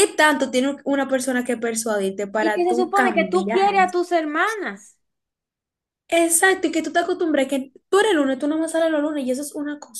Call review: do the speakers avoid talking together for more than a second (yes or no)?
no